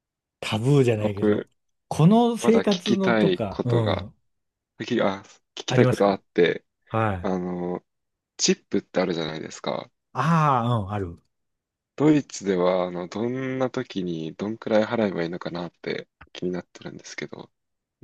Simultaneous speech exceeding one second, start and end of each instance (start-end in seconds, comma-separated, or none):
2.4-4.1